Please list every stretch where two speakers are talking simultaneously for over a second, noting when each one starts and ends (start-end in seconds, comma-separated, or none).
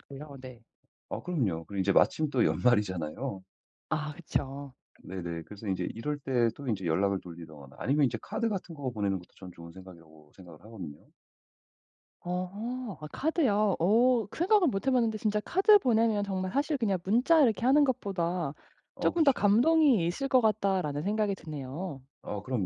none